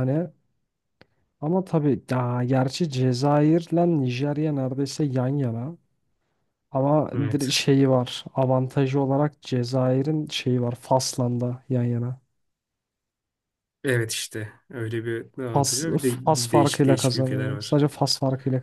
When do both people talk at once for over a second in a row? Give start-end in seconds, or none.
16.5-17.8